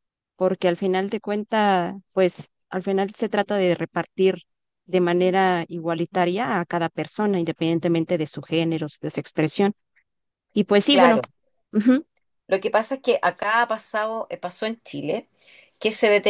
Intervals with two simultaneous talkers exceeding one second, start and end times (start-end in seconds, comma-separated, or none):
none